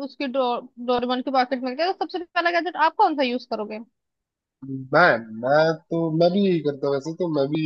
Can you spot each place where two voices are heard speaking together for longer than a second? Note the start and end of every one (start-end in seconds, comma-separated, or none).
none